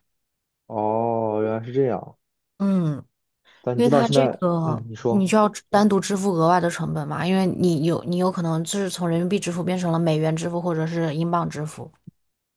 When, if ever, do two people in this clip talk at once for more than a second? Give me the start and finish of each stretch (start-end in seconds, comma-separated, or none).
3.7-5.3